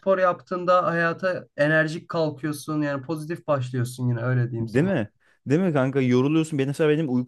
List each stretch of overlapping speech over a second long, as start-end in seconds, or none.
none